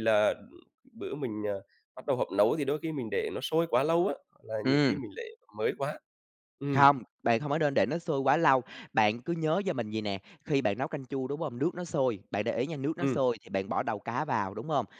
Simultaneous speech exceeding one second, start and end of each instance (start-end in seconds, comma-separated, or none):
none